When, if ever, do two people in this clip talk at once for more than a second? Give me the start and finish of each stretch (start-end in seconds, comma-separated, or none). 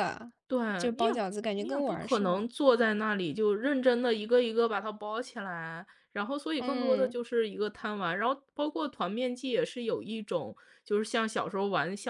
1.0-2.5